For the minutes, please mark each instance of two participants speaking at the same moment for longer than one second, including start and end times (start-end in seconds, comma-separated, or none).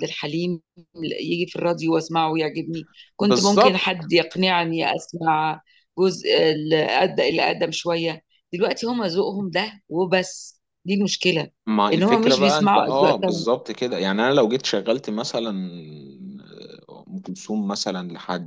11.9-13.4